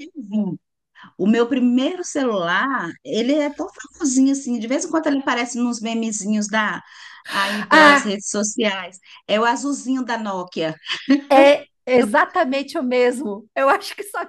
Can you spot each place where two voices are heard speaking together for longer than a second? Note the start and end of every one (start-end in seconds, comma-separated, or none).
none